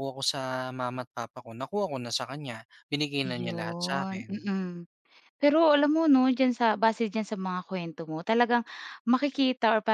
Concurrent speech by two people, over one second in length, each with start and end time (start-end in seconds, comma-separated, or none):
3.3-4.5